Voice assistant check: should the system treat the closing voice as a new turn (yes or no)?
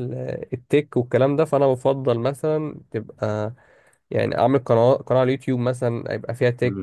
no